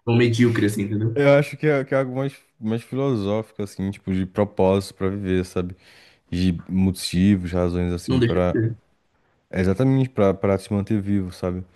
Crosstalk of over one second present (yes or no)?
no